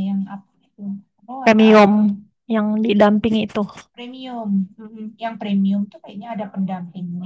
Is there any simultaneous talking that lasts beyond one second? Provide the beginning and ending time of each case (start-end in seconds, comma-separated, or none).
none